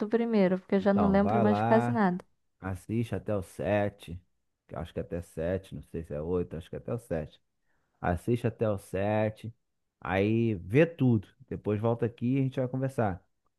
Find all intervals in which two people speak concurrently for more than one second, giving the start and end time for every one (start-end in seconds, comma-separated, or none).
0.8-2.0